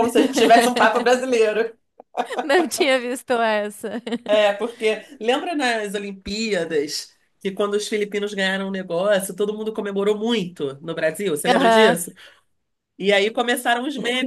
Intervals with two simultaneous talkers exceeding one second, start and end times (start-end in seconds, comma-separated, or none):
none